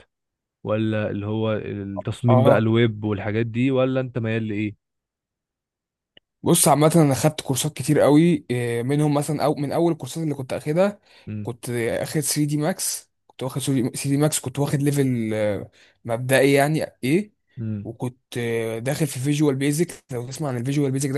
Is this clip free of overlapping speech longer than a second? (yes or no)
yes